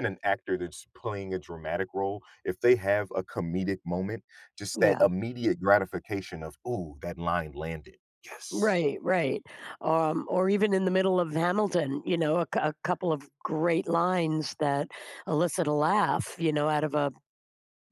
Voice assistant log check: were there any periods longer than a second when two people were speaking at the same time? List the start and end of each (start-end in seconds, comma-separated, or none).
none